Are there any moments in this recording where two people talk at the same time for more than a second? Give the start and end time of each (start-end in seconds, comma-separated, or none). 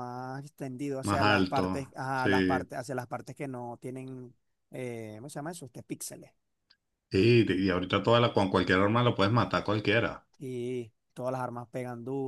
1.0-2.7